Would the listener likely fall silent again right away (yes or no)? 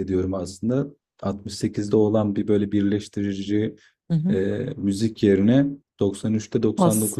no